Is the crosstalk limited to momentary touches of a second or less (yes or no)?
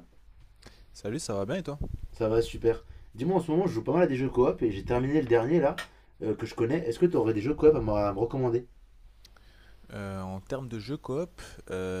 yes